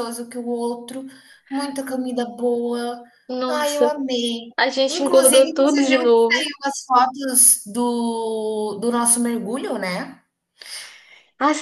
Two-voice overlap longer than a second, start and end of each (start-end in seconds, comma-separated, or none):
4.9-6.5